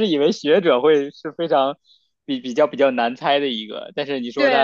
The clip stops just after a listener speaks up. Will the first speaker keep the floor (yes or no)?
no